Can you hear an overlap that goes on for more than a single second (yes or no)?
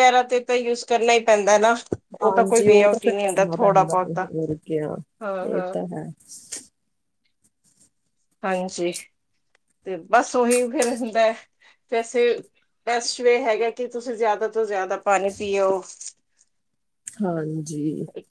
yes